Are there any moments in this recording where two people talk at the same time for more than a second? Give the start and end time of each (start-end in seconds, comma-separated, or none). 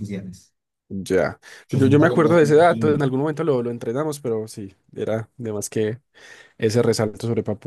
1.7-3.0